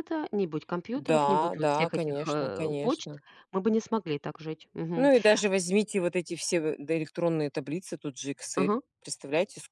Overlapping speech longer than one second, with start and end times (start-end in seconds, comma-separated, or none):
0.9-3.1